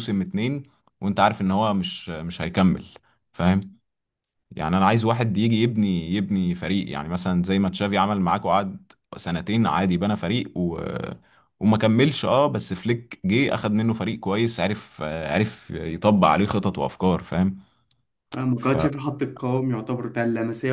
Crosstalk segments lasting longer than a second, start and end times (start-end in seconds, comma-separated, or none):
none